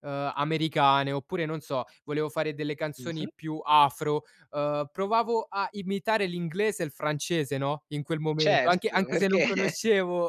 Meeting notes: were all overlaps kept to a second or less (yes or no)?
no